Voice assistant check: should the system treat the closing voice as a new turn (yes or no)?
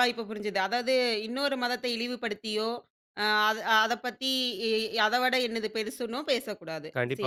yes